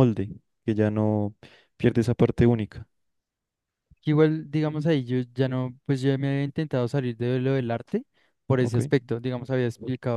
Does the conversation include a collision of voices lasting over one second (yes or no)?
no